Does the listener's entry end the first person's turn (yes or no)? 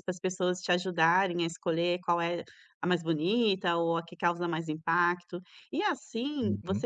no